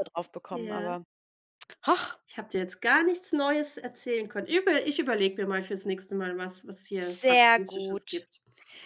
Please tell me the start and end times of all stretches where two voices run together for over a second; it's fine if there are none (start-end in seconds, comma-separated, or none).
7.0-8.3